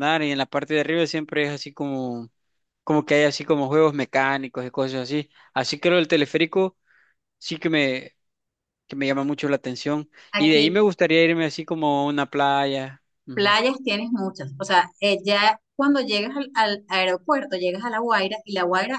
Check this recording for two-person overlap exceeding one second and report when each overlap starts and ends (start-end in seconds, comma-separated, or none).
none